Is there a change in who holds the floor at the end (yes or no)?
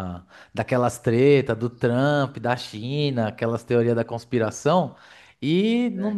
no